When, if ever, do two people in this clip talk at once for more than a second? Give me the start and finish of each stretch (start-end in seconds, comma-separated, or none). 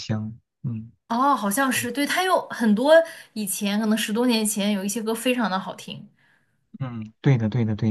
none